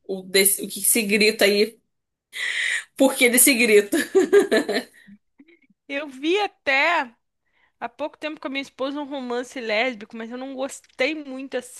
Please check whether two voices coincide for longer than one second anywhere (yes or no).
no